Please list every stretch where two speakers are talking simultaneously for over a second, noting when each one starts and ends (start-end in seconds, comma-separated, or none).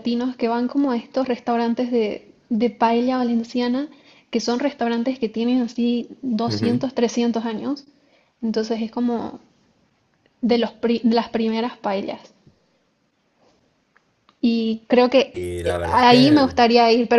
15.3-16.5